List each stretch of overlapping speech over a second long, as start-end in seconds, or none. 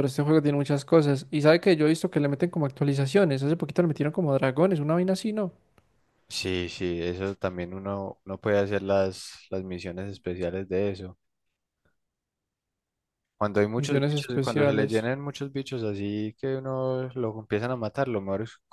13.8-15.1